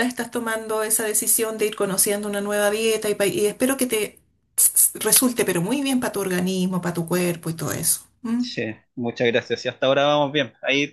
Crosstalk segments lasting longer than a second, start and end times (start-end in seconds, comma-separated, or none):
none